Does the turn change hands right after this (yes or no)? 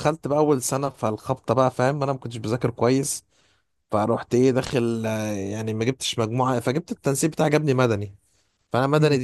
no